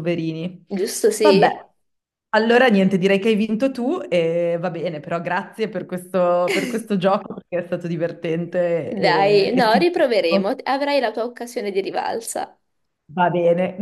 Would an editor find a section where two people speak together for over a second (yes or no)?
yes